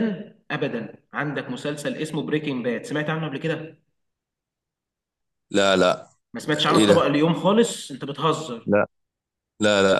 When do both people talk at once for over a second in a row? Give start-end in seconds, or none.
none